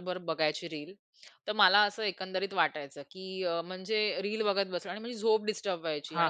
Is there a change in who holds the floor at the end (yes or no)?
no